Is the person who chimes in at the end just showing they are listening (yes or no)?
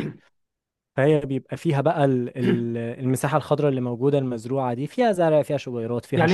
no